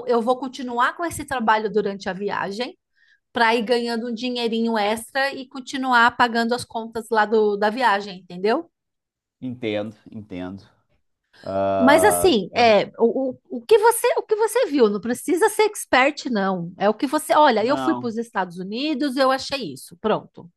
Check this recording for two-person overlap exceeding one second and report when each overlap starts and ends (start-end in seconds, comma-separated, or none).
none